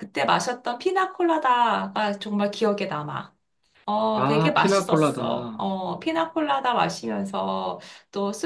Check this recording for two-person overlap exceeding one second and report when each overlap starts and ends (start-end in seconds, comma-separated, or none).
4.1-5.7